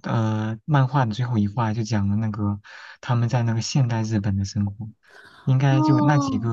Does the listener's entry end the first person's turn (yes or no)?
no